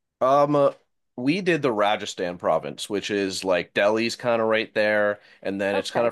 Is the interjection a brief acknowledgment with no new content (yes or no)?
yes